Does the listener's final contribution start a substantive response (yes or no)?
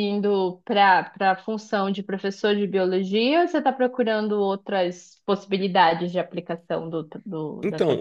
yes